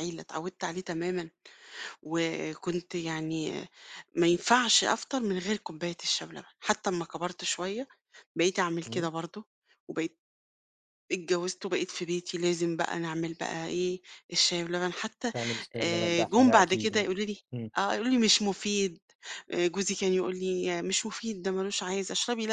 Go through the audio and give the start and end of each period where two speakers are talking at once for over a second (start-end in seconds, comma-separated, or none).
15.8-17.1